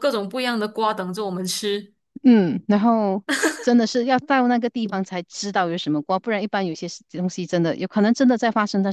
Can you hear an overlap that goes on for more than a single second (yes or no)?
no